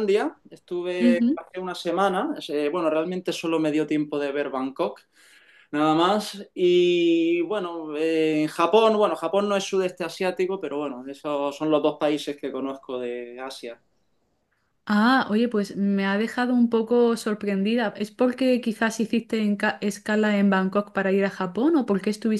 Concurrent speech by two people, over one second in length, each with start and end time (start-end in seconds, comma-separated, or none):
none